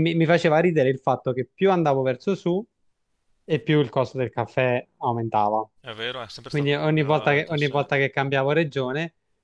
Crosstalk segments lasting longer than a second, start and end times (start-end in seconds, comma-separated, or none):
6.5-7.7